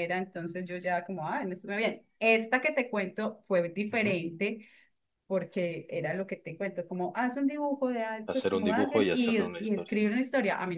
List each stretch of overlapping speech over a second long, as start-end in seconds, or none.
8.3-9.9